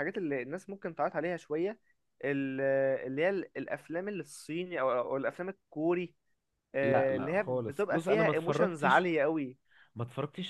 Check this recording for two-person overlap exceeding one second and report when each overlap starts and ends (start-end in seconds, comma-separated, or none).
6.8-9.1